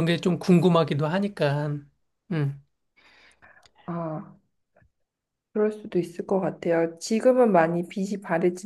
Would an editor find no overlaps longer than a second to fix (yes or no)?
yes